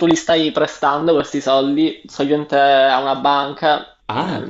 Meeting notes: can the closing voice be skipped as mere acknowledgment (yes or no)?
yes